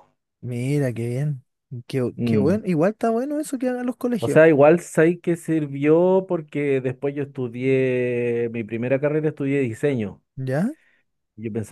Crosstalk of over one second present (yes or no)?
no